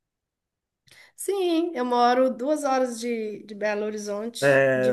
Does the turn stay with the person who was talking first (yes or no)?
no